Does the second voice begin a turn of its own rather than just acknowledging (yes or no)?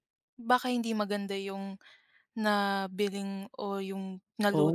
yes